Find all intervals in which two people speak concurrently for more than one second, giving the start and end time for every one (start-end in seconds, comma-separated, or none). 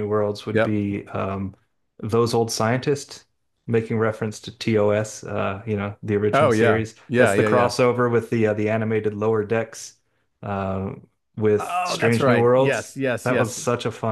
6.3-7.7, 11.6-13.6